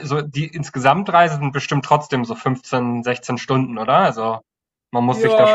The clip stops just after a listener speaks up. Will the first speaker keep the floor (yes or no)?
no